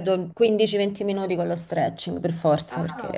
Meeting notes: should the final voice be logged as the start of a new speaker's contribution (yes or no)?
yes